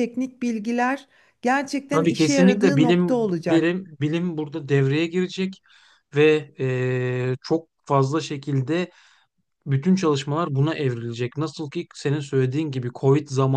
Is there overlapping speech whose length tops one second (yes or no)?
yes